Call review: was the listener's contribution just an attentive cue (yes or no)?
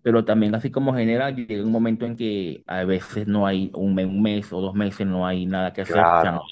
no